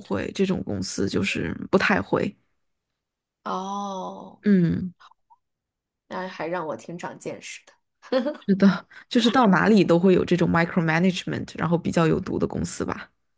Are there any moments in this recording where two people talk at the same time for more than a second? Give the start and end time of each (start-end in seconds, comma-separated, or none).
none